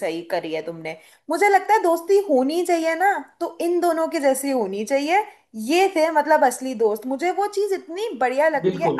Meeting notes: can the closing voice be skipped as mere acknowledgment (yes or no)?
yes